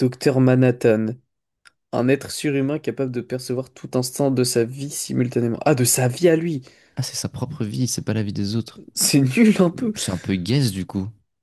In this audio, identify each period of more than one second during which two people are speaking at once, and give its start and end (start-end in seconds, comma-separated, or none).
none